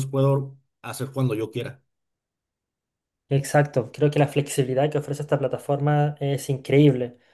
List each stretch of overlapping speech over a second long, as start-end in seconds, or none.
none